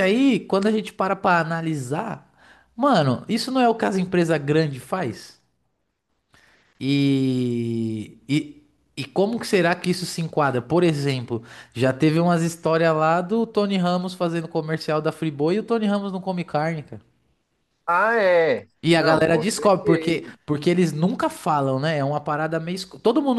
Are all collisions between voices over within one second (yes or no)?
no